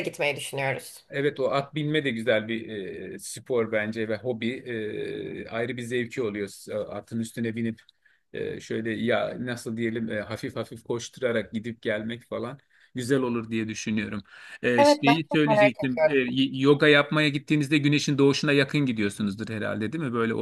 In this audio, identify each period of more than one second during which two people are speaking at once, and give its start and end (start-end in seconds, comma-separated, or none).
14.8-16.2